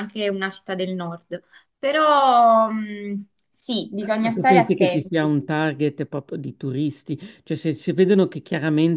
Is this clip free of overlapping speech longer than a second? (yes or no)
no